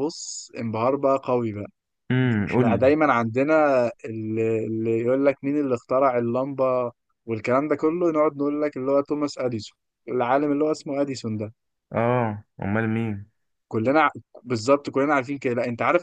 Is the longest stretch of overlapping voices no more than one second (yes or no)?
yes